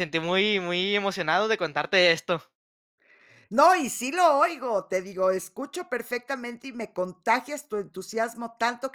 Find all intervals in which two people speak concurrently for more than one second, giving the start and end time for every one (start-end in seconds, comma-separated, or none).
none